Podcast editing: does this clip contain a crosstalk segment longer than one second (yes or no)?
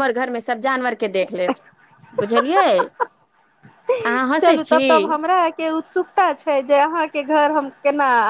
no